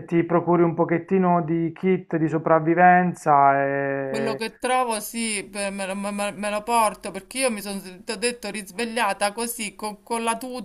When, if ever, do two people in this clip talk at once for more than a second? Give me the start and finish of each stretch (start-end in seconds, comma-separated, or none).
none